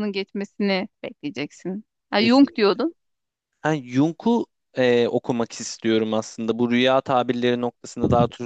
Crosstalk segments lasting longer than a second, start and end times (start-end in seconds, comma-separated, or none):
none